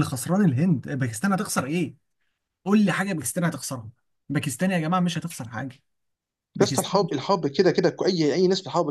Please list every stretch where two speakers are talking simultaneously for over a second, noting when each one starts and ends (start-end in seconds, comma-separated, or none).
none